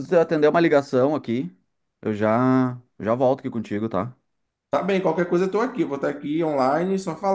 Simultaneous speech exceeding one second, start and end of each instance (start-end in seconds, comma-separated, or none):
none